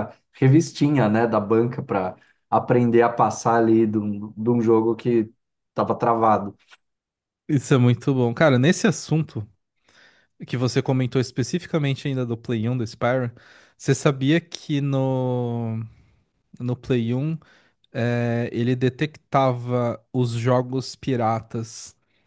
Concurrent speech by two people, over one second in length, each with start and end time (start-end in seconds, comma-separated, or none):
none